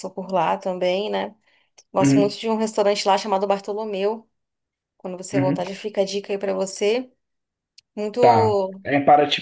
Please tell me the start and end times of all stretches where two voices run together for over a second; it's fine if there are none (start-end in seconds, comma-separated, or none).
none